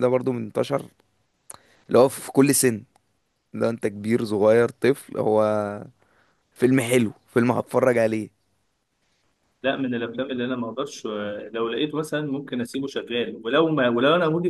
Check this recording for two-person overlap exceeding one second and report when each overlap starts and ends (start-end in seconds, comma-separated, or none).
none